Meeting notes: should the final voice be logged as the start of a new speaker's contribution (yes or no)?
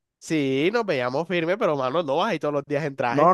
yes